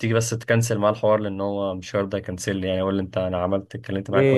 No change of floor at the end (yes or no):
no